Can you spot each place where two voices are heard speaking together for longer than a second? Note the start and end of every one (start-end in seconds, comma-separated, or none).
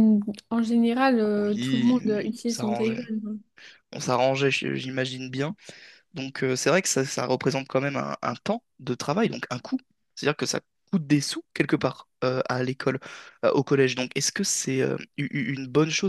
1.4-3.0